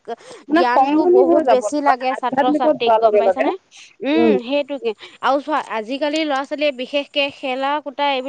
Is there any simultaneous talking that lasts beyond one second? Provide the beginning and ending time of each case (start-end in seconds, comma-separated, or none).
0.6-3.5